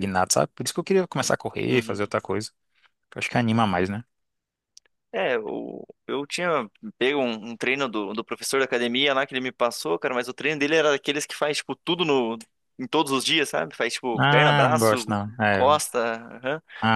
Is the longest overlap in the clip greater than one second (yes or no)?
yes